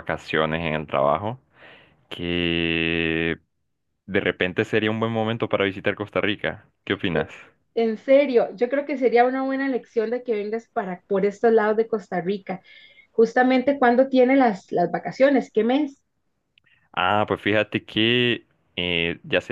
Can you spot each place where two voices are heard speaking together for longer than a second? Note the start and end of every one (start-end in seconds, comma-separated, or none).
none